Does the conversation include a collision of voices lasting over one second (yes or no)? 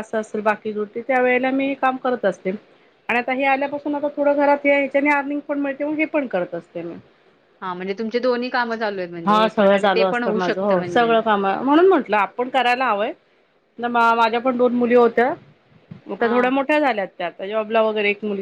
yes